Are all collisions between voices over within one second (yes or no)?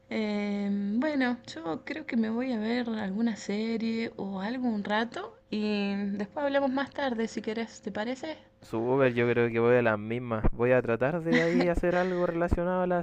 yes